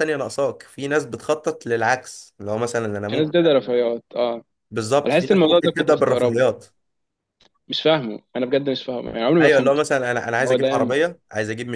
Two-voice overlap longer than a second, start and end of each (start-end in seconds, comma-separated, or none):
5.1-6.4